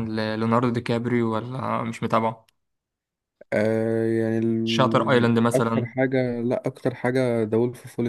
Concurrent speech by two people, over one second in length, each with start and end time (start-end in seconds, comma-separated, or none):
4.6-5.9